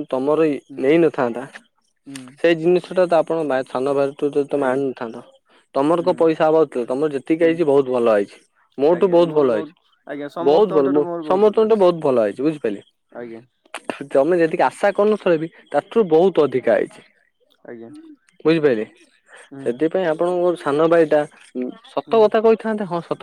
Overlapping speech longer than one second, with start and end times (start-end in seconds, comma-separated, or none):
10.1-11.8